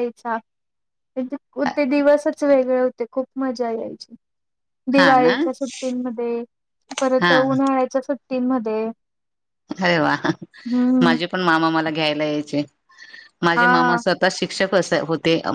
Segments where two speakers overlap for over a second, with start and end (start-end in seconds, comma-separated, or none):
none